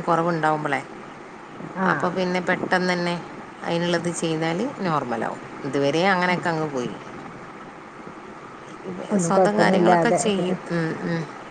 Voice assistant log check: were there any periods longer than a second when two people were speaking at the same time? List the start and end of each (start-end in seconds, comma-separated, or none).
9.3-10.6